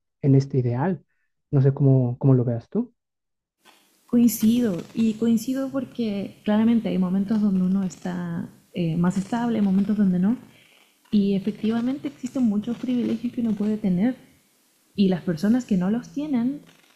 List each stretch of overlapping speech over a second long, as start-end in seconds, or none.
none